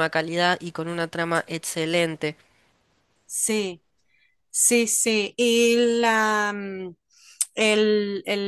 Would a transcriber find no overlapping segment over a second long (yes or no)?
yes